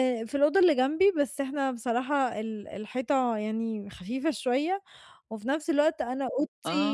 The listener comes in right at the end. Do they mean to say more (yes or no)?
no